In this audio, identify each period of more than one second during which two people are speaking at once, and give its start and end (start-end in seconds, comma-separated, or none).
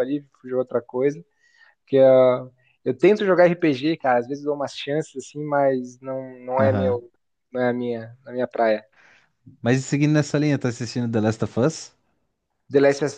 none